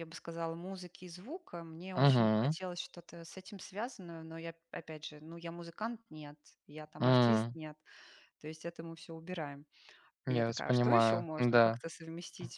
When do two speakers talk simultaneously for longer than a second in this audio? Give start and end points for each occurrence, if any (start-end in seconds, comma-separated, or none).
10.3-11.8